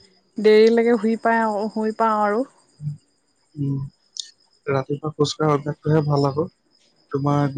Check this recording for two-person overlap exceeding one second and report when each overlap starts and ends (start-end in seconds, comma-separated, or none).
none